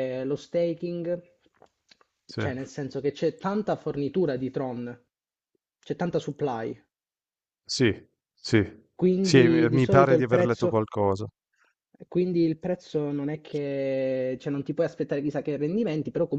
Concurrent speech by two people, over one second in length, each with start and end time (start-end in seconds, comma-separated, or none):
8.9-10.9